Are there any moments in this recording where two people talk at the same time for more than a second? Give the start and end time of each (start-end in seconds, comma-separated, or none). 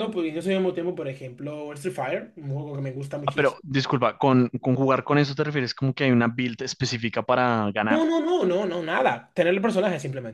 none